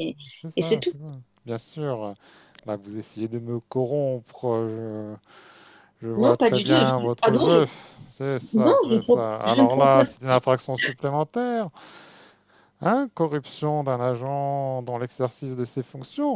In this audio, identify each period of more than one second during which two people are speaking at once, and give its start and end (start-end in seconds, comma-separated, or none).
6.2-7.6, 8.6-10.1